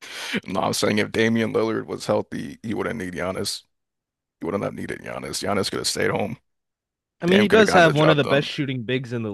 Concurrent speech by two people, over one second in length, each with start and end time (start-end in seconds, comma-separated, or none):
7.3-8.5